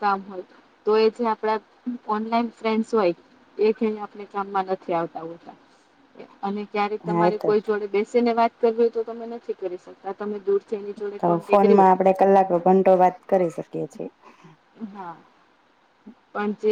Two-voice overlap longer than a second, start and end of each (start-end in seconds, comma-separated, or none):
none